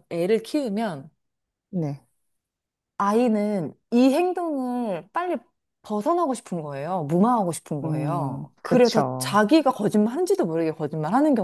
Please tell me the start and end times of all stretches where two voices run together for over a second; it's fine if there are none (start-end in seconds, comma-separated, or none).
7.8-9.4